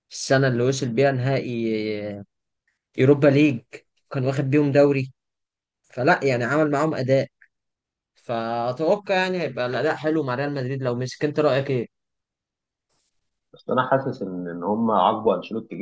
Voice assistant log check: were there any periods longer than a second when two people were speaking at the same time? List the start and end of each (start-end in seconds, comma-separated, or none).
none